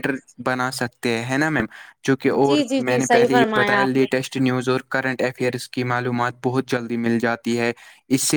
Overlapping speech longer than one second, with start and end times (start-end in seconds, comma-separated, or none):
2.5-4.1